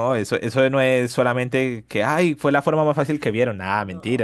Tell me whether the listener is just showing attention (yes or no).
yes